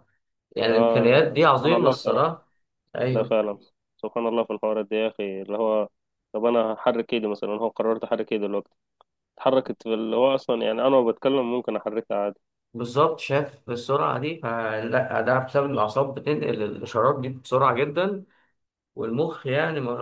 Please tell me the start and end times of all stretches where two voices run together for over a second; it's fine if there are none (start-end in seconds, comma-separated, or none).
0.7-2.3